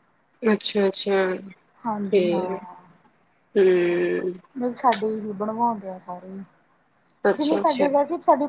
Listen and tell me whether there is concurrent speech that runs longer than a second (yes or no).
no